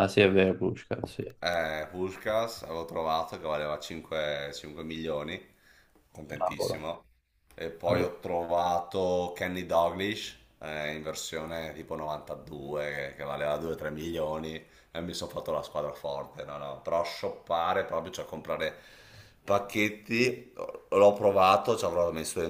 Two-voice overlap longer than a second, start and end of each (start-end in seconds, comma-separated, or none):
none